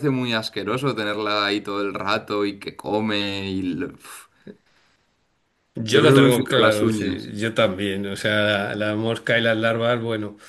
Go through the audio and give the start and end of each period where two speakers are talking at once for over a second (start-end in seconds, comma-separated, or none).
5.9-7.3